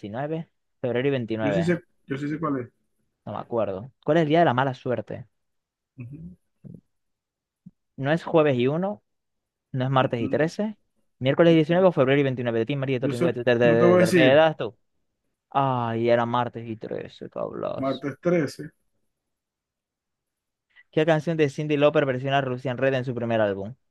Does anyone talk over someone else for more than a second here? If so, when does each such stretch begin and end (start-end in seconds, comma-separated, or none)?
13.0-14.4